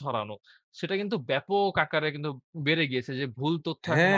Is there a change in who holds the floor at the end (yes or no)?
yes